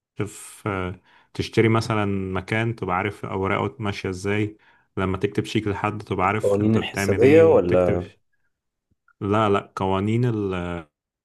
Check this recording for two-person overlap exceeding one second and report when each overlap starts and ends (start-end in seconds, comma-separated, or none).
6.2-8.0